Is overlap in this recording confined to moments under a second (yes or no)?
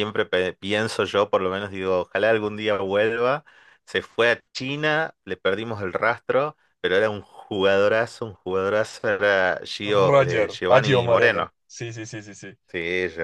no